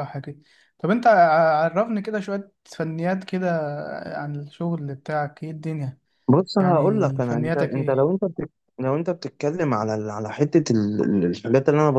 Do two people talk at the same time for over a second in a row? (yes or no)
yes